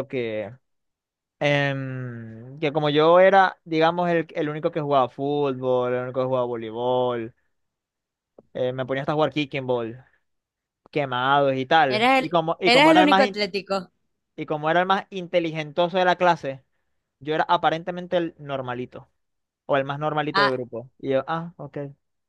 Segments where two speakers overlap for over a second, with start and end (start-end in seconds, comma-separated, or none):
11.9-13.4